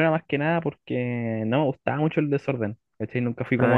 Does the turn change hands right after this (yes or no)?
no